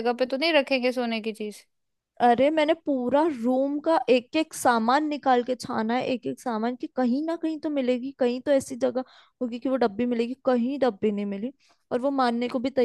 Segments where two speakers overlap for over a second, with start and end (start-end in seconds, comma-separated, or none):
none